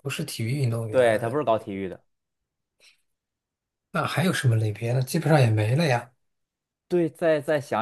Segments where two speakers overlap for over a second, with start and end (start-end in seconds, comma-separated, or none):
none